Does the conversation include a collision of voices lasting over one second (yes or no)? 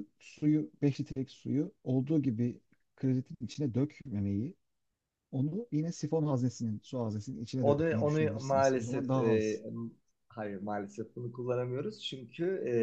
yes